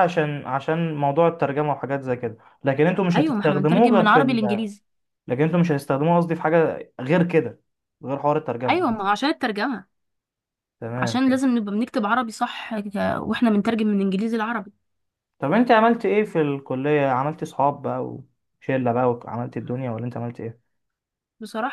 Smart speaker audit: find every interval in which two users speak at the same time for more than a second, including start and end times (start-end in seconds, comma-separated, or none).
3.1-4.4